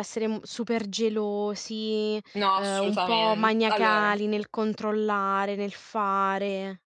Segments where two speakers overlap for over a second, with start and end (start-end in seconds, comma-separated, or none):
2.5-4.1